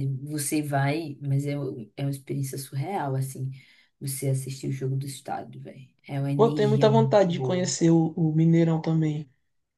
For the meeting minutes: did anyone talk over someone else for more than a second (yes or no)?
yes